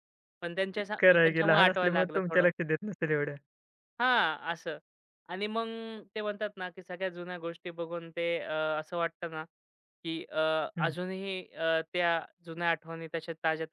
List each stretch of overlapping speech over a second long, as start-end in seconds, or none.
1.0-2.5